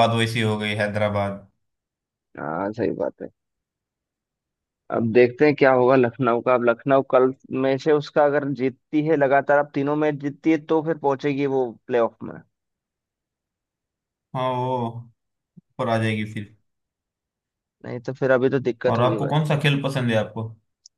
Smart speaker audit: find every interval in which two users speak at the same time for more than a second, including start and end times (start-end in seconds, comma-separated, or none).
none